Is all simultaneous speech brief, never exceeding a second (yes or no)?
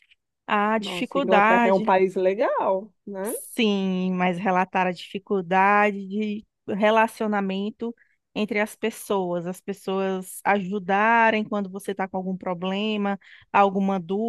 no